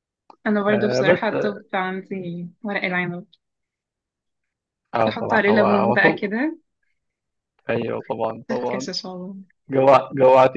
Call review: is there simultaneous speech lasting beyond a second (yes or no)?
yes